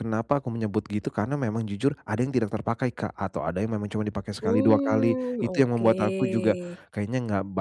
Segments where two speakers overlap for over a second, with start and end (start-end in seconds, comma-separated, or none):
4.4-6.8